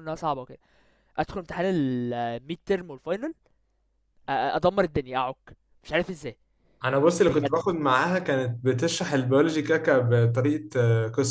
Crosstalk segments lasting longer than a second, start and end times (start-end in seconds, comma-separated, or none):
none